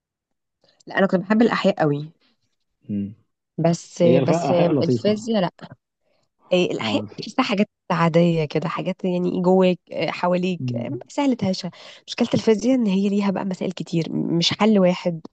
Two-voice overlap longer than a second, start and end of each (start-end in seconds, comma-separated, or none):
4.0-5.3